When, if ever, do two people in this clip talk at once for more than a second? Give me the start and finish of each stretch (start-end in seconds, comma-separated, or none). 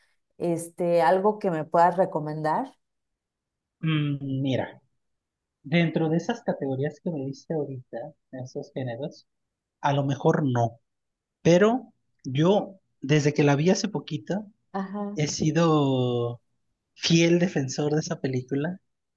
none